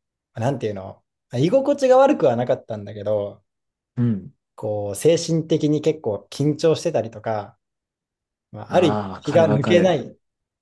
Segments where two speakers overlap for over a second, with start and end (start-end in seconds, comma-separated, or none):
8.7-10.0